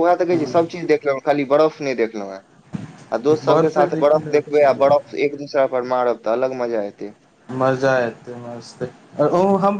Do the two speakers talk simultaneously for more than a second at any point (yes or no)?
yes